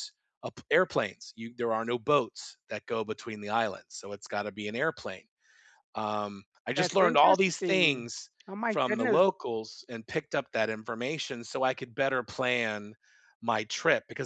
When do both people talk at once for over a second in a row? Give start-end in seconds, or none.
6.8-8.1